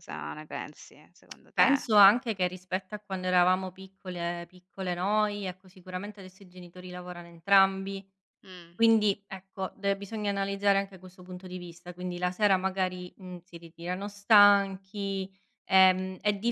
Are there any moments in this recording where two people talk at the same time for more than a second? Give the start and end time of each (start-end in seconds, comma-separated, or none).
none